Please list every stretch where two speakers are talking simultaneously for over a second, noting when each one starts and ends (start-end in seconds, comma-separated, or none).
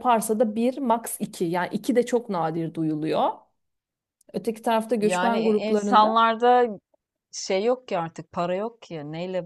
5.0-6.2